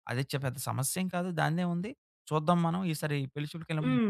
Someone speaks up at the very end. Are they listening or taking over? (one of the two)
taking over